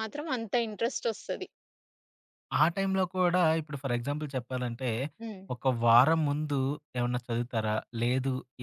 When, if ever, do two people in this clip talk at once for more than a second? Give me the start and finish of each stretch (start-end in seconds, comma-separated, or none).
none